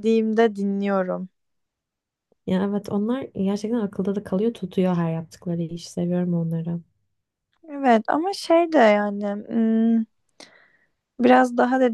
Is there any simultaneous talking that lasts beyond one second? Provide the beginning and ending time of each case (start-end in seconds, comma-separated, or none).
none